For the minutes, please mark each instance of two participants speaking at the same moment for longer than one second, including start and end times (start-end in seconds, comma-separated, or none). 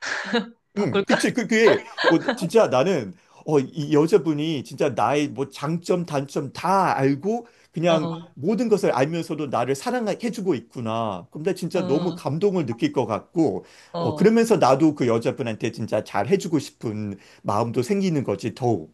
none